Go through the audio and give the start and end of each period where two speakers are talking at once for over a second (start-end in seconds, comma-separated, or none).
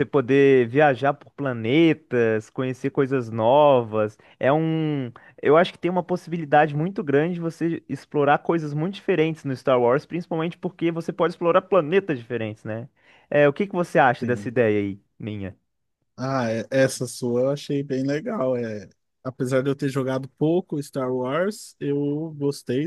none